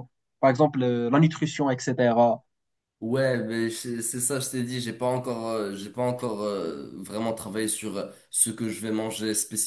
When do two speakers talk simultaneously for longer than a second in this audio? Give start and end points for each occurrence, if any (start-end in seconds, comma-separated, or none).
none